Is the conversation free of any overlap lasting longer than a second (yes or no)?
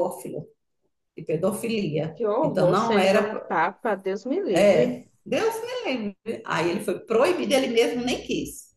no